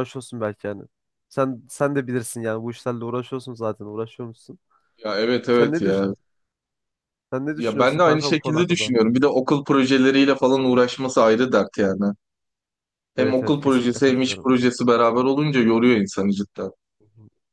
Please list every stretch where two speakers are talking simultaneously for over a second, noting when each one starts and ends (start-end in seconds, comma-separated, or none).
7.5-8.9, 13.2-14.5